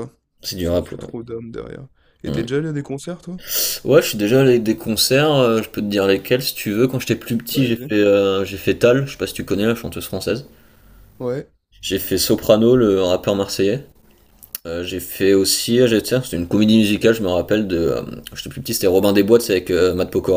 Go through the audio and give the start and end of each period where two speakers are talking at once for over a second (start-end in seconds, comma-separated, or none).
none